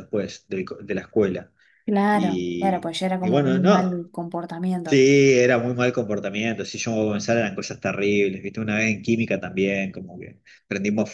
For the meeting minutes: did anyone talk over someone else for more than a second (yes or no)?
yes